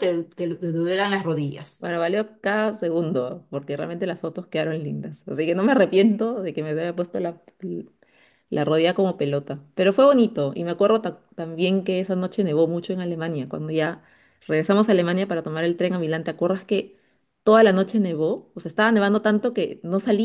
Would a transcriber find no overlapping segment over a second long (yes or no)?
yes